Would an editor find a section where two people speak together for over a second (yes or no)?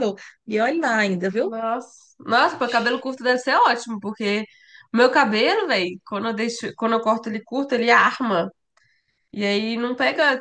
no